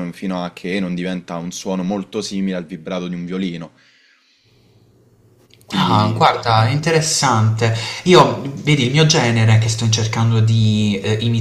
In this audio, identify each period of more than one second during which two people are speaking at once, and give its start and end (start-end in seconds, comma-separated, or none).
none